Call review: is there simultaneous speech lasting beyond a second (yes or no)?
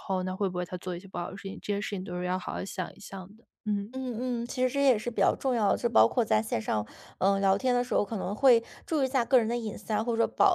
no